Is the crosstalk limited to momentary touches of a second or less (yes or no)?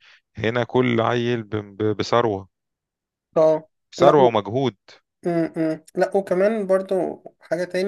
yes